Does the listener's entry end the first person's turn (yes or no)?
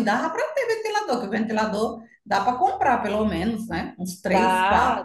yes